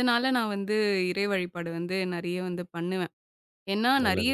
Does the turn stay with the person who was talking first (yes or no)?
yes